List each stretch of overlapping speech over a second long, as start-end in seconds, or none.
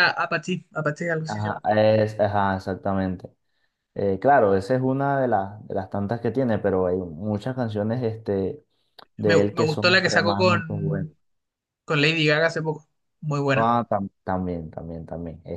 9.2-11.1